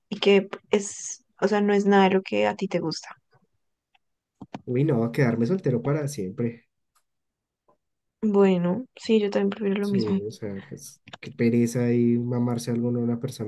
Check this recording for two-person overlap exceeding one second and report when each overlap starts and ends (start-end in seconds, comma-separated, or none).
none